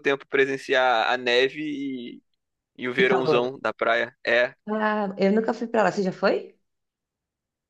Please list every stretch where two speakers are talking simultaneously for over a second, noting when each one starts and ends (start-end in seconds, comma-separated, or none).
none